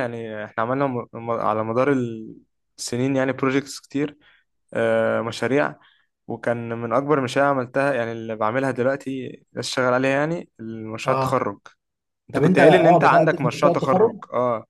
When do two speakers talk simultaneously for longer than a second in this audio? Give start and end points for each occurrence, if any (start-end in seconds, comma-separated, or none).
12.3-14.1